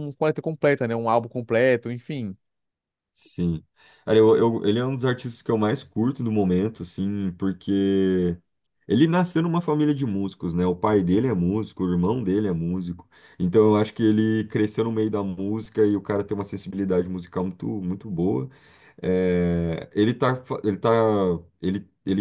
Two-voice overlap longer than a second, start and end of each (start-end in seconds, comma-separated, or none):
none